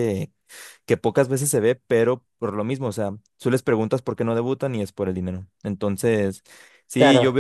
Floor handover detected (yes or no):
no